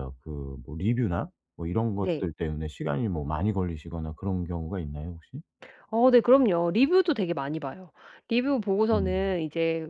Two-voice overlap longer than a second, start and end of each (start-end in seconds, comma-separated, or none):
none